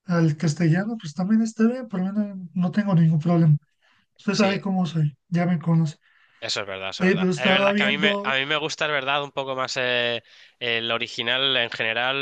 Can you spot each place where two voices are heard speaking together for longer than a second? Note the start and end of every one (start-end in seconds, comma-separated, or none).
7.0-8.3